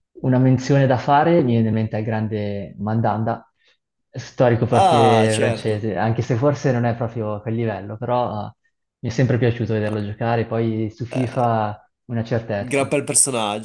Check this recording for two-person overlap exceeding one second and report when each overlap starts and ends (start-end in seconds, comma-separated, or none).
4.7-5.9